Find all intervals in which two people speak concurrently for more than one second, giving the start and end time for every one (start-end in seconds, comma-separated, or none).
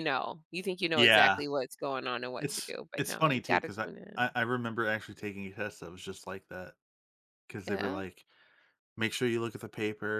2.4-4.3